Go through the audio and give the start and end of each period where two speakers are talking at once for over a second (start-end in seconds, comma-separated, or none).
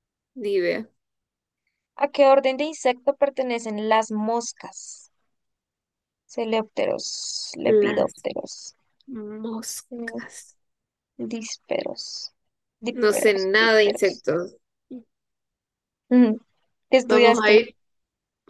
12.9-14.2